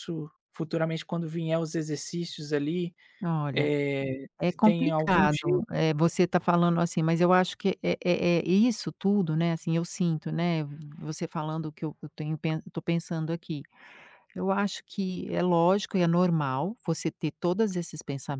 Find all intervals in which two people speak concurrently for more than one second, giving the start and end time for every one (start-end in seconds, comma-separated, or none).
4.4-5.6